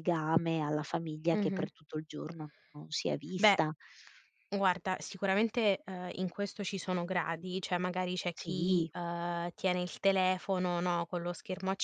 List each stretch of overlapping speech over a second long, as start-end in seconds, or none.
none